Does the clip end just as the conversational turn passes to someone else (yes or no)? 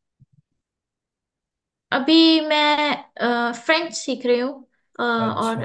no